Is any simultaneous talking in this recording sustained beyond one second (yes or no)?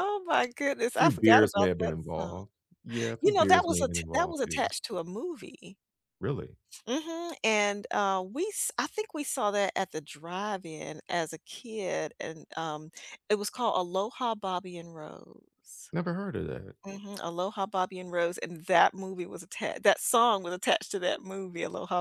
yes